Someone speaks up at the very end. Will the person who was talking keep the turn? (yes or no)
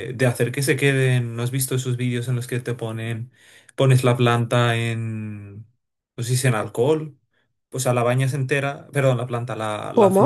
yes